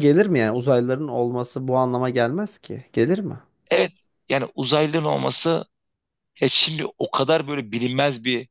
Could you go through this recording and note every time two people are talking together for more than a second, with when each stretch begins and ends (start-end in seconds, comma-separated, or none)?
none